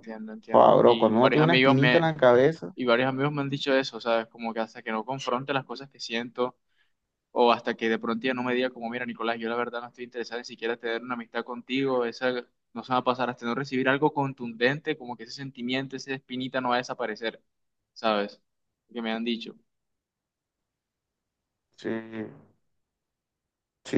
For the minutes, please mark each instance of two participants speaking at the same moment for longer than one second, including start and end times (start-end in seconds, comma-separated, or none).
0.5-2.1